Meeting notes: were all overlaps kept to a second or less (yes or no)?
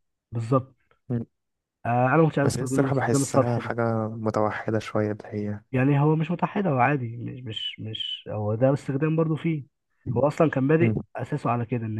no